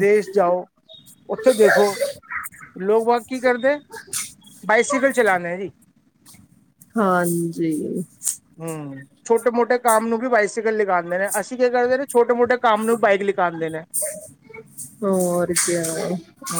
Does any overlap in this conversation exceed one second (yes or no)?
no